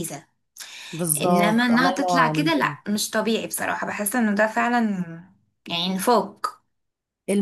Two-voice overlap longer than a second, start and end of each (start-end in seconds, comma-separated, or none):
1.2-2.8